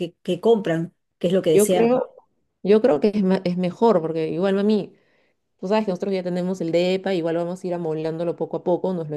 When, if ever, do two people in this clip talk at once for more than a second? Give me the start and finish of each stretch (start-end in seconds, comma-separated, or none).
none